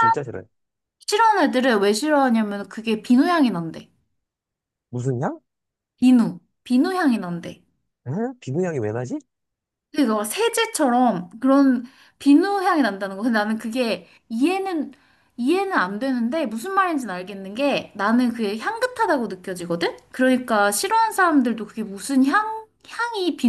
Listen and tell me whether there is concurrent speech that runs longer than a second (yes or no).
no